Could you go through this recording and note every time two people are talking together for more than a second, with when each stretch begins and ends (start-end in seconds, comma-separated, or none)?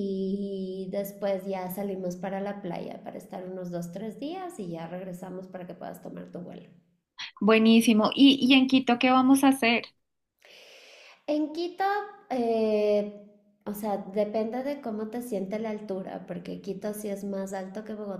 none